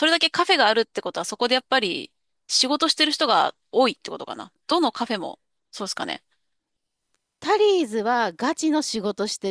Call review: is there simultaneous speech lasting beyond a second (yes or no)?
no